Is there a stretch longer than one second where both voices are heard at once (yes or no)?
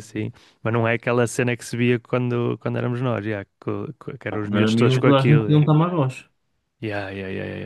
yes